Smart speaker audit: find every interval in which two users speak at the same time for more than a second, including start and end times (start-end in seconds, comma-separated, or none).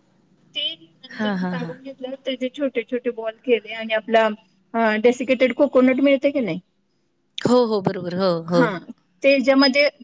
none